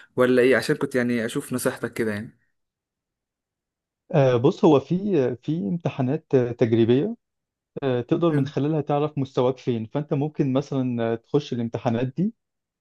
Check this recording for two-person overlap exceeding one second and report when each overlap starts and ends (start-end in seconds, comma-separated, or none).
none